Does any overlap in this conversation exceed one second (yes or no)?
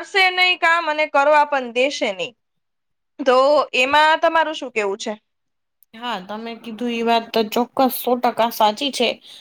no